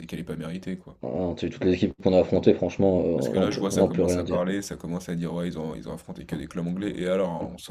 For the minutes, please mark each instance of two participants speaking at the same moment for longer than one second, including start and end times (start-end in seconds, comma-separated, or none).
3.1-4.4